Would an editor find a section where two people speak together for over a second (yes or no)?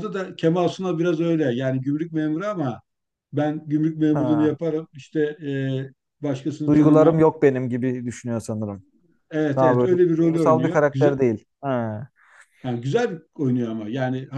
yes